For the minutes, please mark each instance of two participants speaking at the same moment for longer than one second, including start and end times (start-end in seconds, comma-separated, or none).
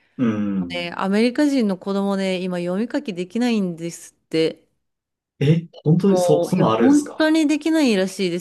6.0-7.3